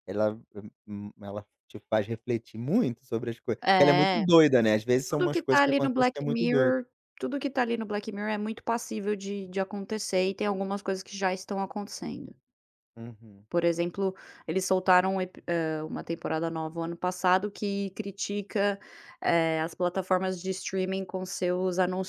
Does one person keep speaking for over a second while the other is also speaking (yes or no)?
yes